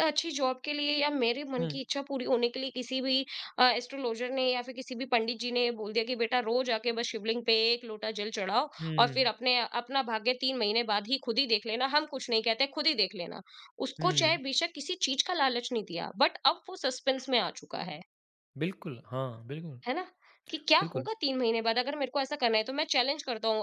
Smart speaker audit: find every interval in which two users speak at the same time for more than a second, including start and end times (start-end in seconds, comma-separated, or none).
none